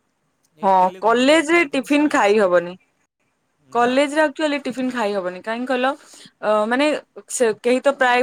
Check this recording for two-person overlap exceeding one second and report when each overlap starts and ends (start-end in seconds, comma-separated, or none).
0.7-2.6